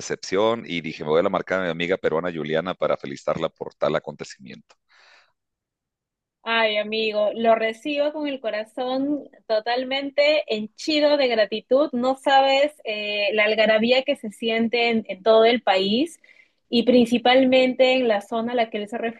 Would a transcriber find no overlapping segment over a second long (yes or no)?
yes